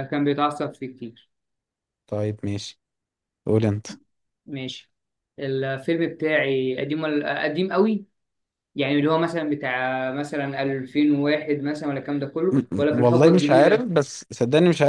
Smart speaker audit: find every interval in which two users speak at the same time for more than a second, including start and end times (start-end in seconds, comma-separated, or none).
12.5-13.9